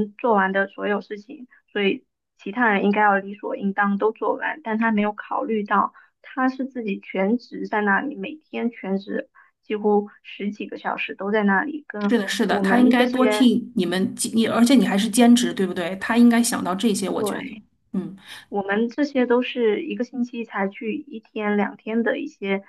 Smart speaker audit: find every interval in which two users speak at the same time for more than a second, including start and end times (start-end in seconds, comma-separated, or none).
12.1-13.5